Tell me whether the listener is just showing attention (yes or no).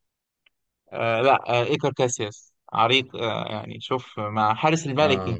yes